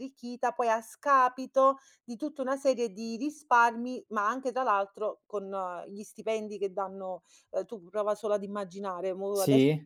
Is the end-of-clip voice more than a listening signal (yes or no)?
no